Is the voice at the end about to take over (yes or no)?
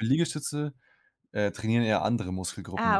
yes